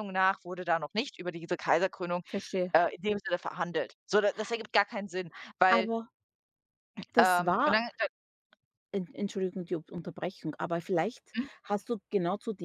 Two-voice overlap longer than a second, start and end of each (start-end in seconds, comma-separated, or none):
none